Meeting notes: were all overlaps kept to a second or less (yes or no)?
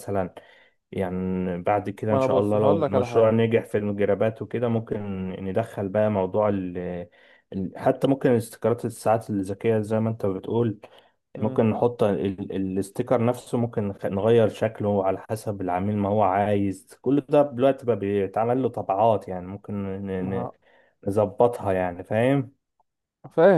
no